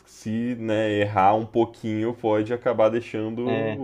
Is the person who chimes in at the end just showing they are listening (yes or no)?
no